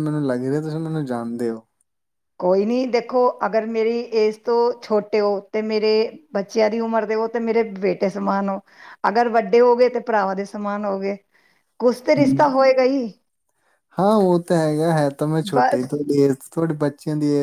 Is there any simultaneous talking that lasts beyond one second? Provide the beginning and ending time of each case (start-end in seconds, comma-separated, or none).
none